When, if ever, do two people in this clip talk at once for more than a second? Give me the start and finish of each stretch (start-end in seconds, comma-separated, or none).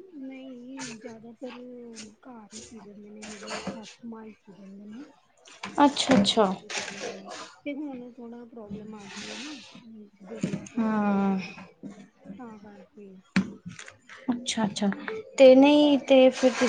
none